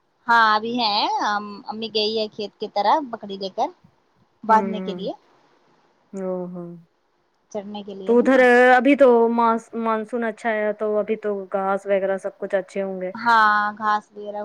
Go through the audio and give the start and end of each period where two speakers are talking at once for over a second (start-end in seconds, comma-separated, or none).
none